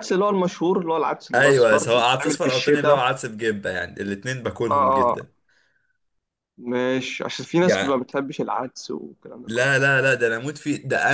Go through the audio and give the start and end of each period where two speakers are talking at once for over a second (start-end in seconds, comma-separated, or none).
1.3-3.1